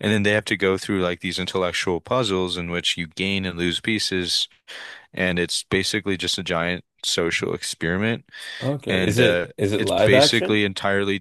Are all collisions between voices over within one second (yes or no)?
no